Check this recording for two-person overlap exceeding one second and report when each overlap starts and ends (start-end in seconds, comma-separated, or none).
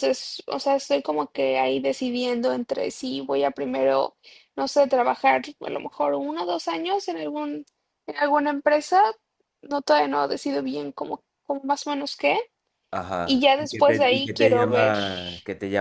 13.2-14.9